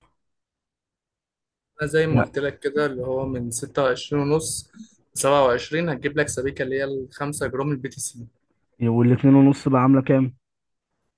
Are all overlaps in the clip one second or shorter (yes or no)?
yes